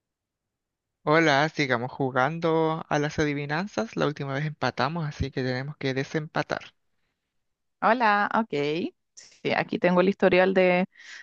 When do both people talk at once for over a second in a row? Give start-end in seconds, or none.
none